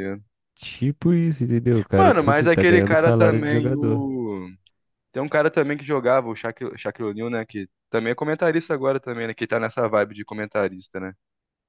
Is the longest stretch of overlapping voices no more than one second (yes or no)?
no